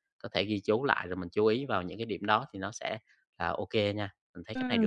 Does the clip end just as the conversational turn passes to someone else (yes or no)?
yes